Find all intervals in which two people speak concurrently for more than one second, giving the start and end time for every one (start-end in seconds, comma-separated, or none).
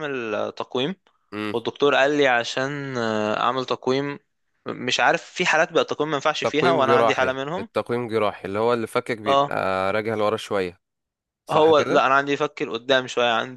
6.4-7.7